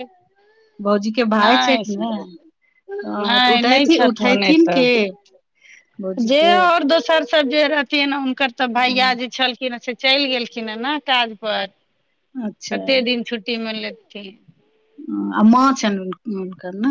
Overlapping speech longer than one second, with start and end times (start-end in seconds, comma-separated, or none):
3.2-4.8